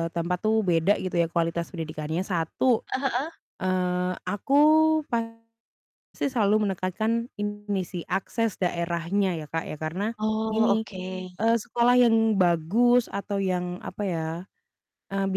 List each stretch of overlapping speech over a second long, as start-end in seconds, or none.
none